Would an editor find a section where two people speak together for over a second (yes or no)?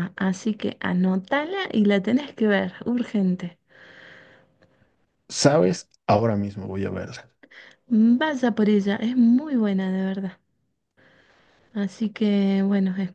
no